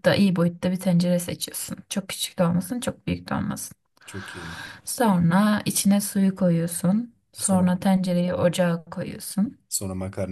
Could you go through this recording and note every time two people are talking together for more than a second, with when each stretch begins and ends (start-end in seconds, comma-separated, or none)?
none